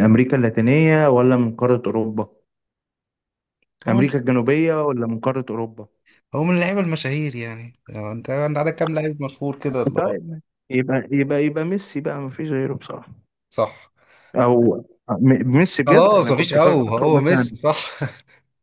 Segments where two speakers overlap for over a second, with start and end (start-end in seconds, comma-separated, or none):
15.9-17.5